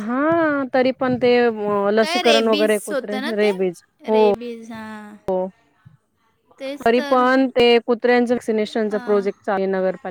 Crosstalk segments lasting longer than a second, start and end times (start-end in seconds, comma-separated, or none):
2.0-3.5